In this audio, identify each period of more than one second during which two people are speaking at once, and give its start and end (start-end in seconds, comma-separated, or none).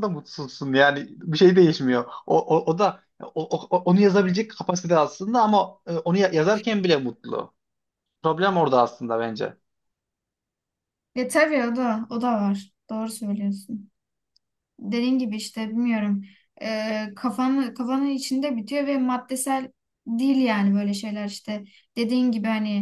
none